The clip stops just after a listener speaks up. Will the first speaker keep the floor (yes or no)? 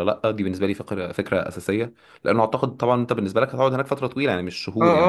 no